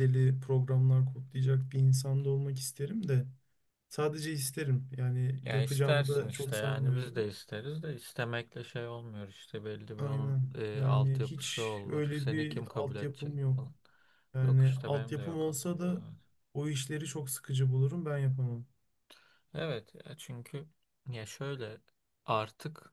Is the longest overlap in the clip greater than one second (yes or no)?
yes